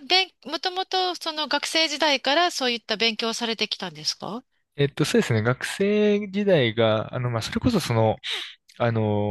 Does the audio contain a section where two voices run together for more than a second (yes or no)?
no